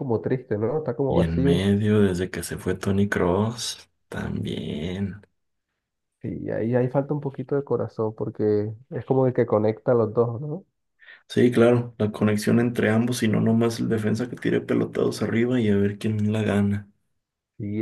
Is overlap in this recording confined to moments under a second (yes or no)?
yes